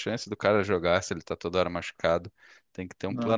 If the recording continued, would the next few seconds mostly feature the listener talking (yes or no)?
no